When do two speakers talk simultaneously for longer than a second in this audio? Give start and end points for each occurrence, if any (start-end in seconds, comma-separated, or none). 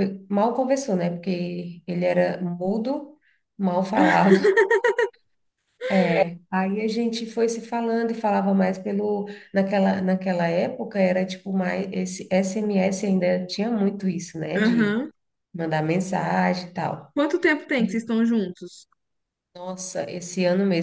none